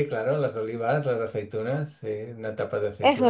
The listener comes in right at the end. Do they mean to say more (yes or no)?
yes